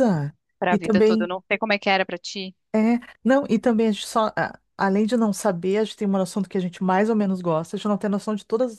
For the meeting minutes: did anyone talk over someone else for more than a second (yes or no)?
no